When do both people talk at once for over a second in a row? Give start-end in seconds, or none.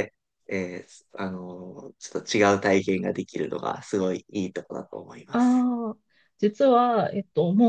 none